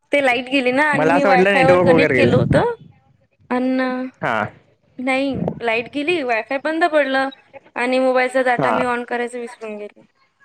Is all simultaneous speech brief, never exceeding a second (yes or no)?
no